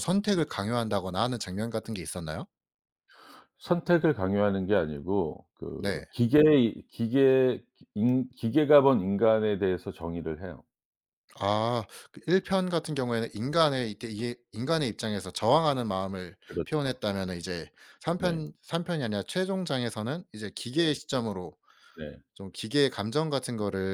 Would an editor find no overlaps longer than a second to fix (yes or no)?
yes